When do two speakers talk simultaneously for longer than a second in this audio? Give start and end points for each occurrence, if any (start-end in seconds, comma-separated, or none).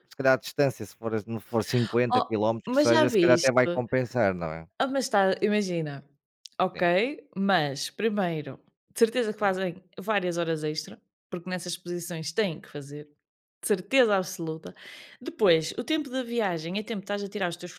2.1-3.5